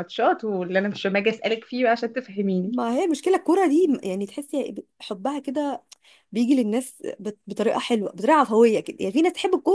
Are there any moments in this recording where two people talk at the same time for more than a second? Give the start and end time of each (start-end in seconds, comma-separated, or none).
none